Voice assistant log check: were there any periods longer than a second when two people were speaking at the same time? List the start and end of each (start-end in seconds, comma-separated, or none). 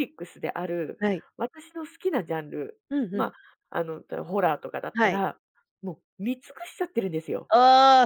none